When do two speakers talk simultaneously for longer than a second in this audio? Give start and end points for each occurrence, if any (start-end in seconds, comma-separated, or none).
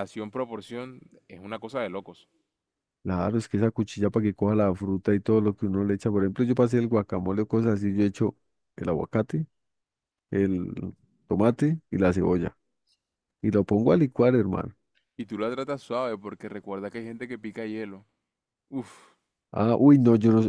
none